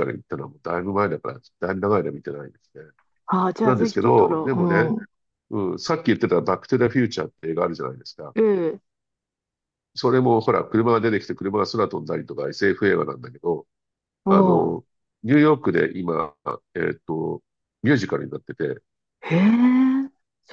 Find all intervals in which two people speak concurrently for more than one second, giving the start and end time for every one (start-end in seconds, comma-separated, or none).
3.6-5.0